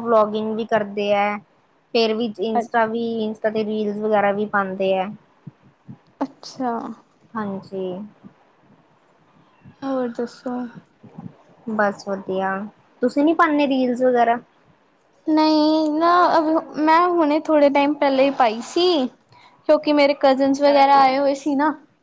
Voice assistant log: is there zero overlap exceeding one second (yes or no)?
yes